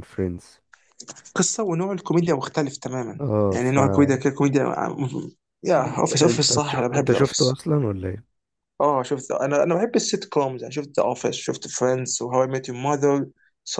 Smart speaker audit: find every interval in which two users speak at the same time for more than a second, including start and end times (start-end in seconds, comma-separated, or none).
5.8-7.6